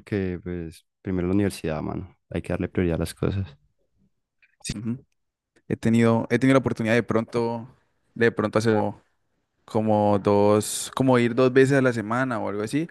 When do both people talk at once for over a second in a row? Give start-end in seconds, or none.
none